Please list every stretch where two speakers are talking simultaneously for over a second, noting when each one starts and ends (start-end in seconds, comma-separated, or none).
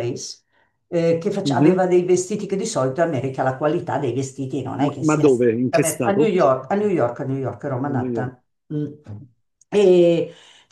4.8-6.3